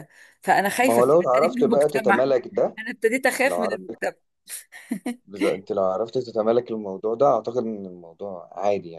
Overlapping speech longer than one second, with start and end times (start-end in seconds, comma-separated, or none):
0.8-2.2